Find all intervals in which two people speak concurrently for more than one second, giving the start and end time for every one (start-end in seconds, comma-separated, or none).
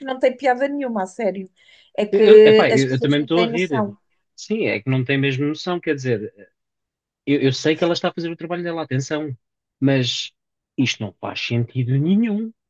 2.1-3.9